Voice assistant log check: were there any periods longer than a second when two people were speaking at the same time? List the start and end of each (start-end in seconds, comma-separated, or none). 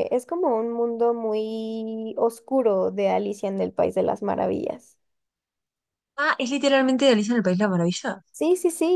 none